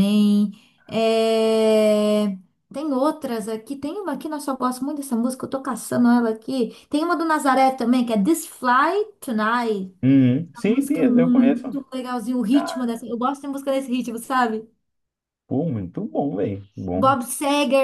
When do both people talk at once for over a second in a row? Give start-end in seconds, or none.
10.6-11.8